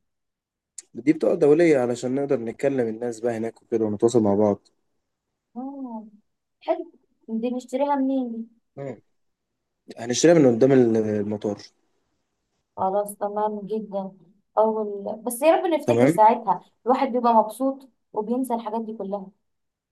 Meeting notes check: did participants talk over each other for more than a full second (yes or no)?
no